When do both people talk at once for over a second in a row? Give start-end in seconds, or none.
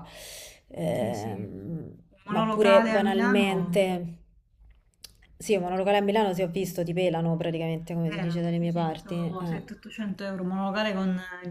2.1-3.8, 8.0-9.6